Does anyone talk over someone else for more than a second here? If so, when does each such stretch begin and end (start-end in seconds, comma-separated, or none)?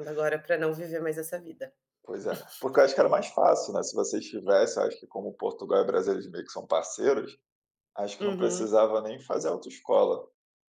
none